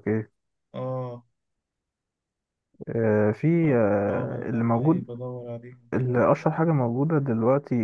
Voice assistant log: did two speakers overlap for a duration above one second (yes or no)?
yes